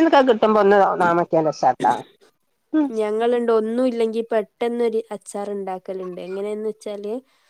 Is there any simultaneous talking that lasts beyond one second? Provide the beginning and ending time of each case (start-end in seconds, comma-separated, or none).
none